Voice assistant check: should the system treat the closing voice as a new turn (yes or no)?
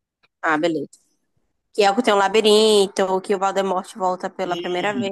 yes